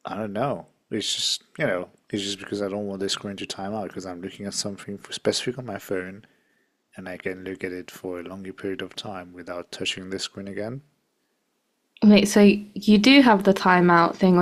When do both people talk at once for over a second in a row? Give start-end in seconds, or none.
none